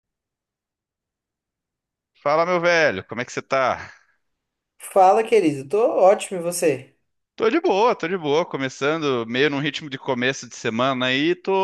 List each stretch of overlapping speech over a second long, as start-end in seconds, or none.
none